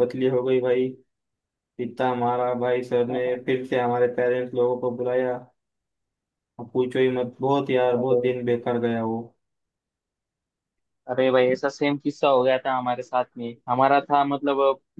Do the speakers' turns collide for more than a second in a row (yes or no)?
no